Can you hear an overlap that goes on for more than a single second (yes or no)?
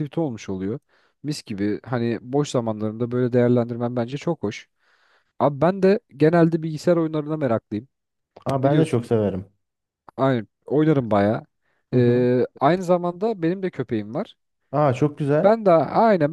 no